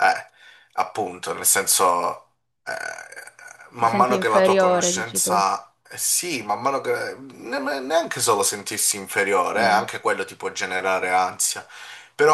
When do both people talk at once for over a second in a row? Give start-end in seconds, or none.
3.8-5.5